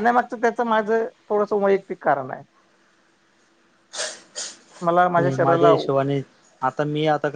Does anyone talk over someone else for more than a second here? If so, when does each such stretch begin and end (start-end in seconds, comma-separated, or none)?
none